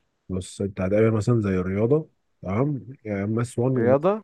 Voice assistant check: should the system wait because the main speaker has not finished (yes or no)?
yes